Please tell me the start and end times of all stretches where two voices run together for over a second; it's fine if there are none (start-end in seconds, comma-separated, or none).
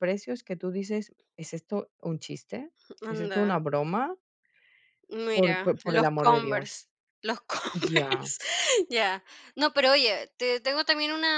5.3-6.8